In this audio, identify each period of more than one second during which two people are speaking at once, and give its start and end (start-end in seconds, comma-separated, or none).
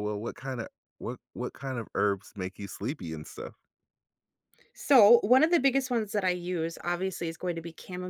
none